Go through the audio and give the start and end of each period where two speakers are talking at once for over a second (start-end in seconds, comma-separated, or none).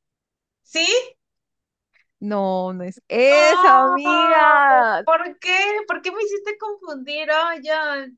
3.3-4.6